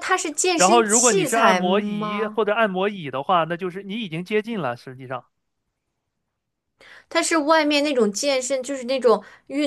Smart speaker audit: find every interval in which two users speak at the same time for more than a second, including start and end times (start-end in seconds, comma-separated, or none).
0.6-2.4